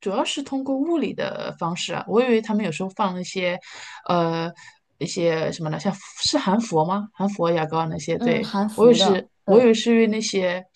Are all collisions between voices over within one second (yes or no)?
no